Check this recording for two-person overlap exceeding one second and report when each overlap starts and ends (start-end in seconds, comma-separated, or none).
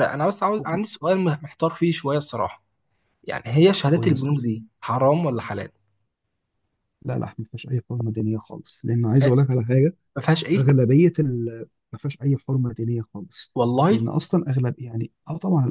none